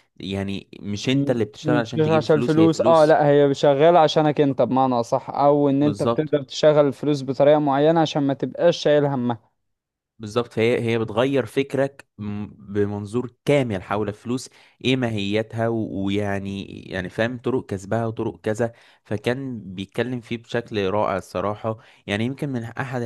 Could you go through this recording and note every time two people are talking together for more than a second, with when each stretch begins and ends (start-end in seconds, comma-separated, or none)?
1.1-3.2